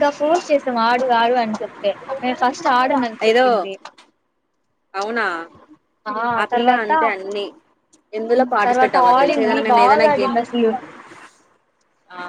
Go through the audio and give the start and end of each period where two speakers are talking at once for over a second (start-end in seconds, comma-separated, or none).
8.7-10.3